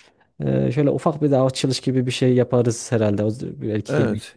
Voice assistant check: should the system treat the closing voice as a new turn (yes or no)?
yes